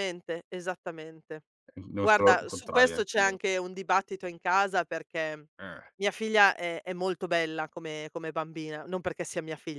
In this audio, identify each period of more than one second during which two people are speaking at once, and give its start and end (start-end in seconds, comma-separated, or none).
2.0-3.4